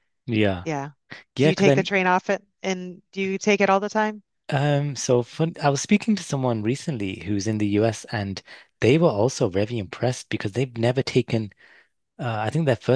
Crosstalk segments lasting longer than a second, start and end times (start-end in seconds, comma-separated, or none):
none